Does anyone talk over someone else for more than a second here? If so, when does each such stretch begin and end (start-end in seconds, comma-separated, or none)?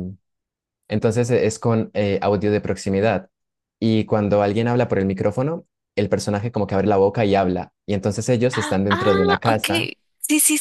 8.5-9.9